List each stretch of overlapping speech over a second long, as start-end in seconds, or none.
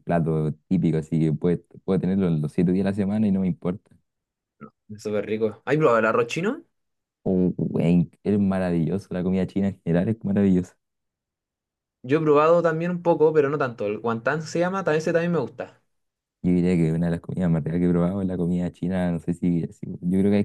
none